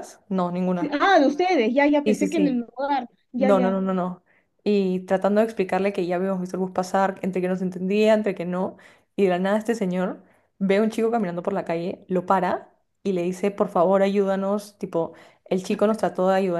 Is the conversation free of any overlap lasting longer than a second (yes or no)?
yes